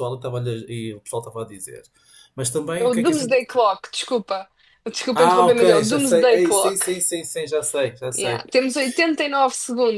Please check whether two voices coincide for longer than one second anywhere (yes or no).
yes